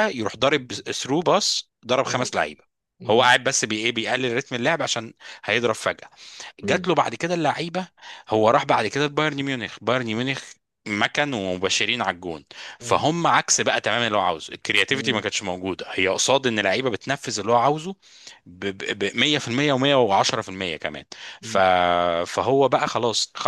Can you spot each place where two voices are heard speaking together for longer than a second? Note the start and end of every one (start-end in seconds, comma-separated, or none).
none